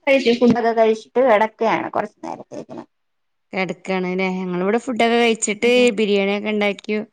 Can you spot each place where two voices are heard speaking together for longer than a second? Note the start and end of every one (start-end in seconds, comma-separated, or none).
none